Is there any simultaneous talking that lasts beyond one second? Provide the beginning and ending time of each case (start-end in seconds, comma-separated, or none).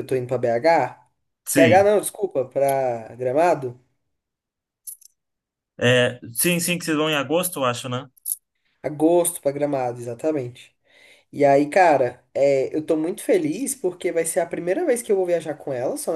none